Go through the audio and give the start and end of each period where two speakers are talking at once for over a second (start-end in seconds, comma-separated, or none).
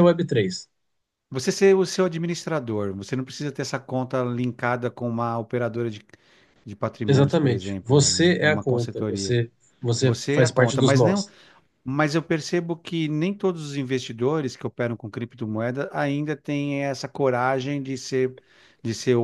7.1-9.4, 10.0-11.2